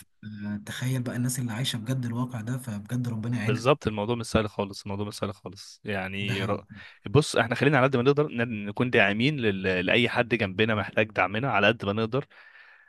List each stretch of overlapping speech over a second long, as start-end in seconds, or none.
none